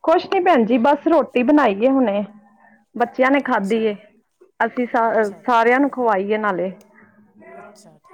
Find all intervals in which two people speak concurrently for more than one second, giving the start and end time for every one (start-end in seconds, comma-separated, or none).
none